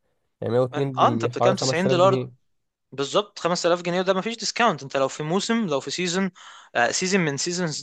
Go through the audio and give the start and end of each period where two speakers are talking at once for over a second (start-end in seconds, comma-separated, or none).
0.7-2.2